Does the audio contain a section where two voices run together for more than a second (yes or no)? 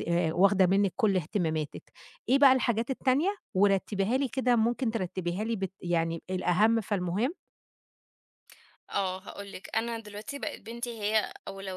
no